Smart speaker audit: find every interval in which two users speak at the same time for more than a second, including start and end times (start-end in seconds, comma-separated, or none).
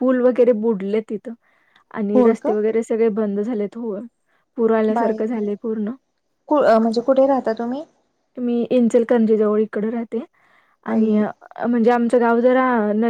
none